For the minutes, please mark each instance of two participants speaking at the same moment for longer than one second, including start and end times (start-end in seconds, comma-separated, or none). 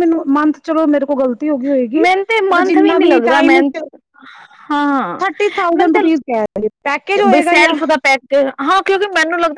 2.0-3.6